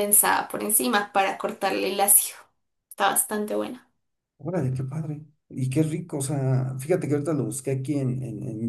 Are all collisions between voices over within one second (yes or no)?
yes